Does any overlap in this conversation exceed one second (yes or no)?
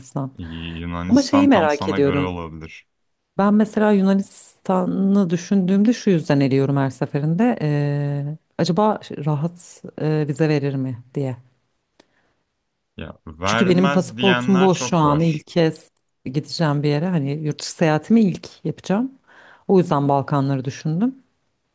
yes